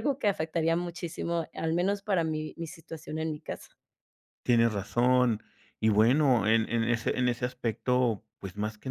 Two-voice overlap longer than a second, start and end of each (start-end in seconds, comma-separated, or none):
none